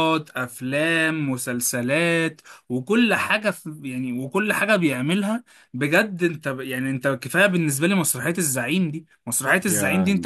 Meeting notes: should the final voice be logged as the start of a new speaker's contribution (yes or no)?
no